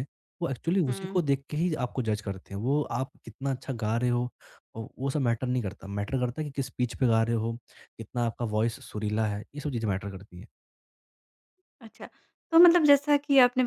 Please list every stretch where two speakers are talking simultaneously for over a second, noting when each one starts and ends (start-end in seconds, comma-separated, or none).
none